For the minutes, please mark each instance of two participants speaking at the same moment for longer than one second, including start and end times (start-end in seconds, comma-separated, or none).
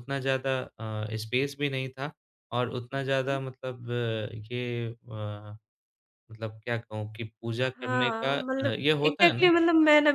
7.8-9.5